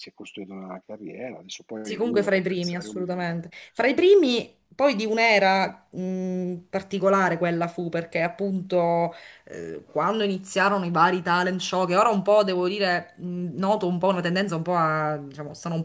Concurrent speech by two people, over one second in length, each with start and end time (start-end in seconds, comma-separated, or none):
1.8-3.4